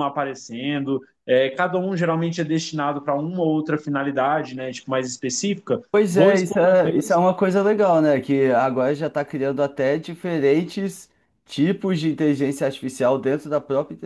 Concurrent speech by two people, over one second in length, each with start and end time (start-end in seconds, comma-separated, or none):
5.9-7.2